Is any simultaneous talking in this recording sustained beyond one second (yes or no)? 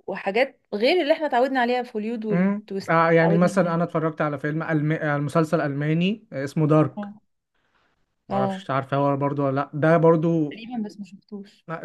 yes